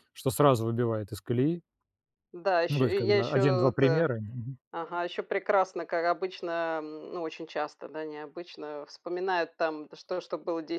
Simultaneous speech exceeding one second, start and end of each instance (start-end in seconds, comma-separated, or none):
2.7-4.1